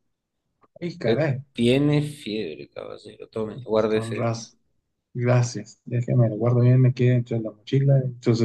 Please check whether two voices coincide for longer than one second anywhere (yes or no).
no